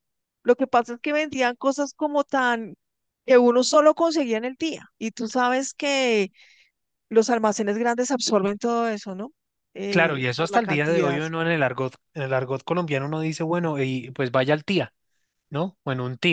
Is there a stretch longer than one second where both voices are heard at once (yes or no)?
yes